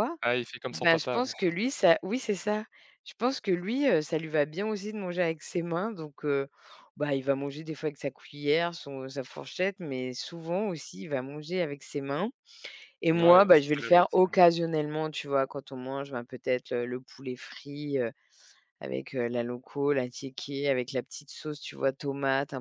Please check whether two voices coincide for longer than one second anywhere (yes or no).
yes